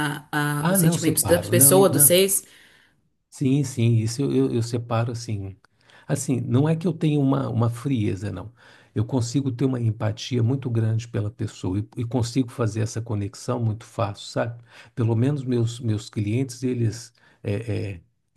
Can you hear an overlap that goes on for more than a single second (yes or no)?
yes